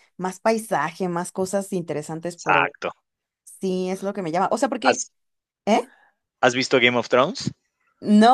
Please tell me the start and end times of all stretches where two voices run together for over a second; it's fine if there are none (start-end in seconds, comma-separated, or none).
none